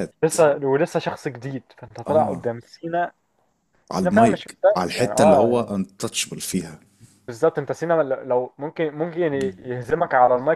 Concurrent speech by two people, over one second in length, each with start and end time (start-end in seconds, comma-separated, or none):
3.9-5.7